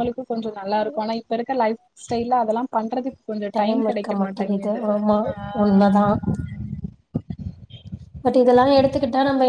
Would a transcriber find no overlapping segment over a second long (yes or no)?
yes